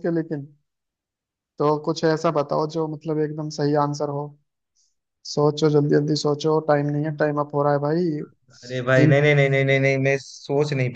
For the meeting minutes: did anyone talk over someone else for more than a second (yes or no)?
no